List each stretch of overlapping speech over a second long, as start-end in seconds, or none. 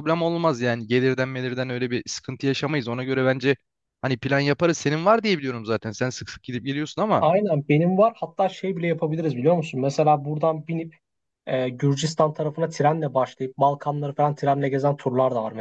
none